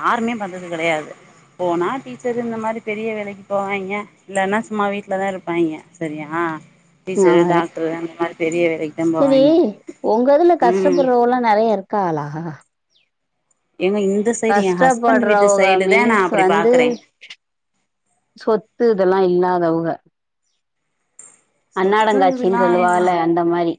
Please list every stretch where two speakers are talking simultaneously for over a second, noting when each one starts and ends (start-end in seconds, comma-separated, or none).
14.5-16.8, 21.8-23.1